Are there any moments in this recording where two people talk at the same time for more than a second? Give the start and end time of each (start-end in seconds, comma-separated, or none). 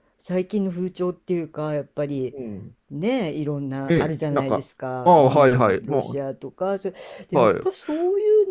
3.9-6.2